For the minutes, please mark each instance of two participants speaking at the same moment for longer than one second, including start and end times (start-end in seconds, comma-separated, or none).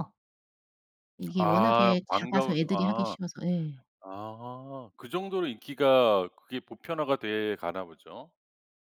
1.4-3.2